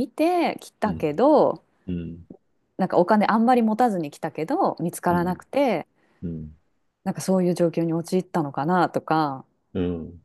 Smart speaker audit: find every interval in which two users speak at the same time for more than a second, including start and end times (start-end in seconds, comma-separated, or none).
none